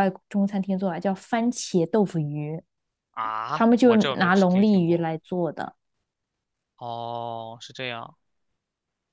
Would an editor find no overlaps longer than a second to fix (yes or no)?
no